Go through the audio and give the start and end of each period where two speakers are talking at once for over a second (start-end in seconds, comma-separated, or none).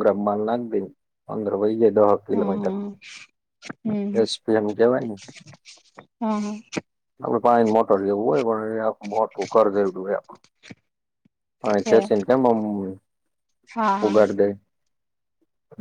none